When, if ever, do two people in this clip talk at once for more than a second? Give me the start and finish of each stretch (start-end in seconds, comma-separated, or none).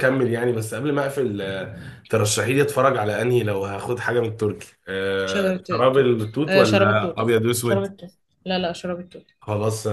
5.2-8.0